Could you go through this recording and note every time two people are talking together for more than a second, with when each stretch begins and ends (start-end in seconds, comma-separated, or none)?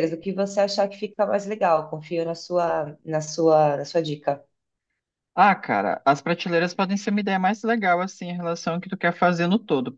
none